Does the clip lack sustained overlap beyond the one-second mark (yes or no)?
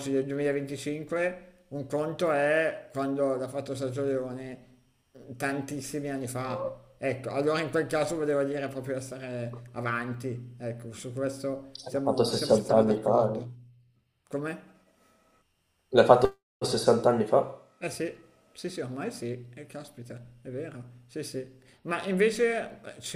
no